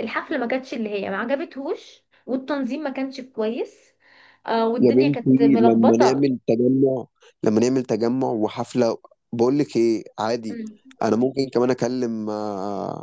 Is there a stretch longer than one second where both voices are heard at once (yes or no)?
yes